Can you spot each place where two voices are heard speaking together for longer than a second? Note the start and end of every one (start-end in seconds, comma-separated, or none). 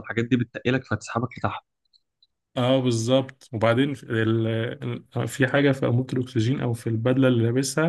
none